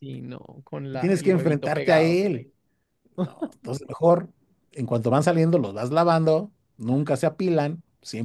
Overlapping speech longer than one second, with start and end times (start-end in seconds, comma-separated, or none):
0.9-2.2